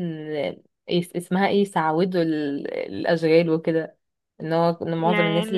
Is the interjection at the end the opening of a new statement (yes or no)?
no